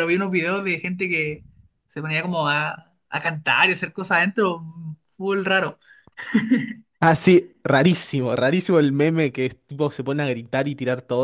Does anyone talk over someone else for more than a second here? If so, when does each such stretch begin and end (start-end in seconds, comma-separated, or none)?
none